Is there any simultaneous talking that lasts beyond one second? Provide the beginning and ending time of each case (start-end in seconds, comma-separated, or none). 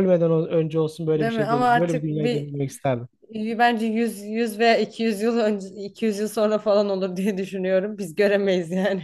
1.1-2.5